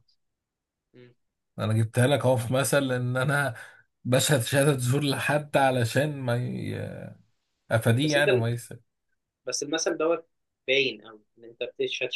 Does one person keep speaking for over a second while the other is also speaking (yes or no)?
no